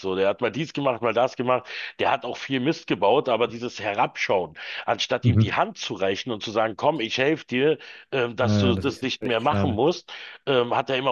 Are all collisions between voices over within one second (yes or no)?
no